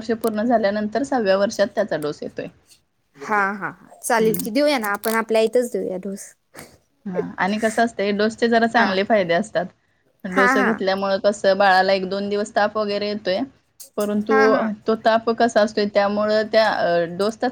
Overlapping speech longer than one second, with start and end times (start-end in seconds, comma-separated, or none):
none